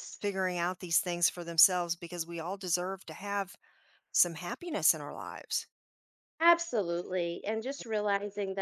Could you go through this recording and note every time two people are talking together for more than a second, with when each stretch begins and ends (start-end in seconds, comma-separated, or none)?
none